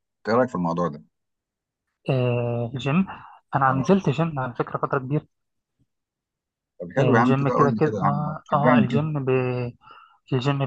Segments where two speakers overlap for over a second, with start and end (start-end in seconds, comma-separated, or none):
7.0-9.0